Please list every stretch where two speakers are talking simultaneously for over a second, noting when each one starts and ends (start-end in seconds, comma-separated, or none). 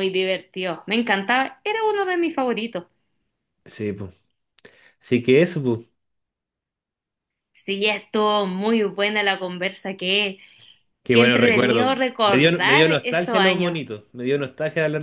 11.1-13.8